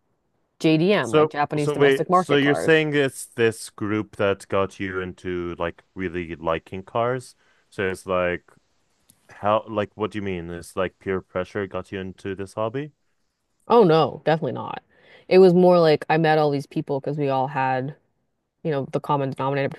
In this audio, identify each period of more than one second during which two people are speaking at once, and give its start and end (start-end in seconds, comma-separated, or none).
1.0-2.8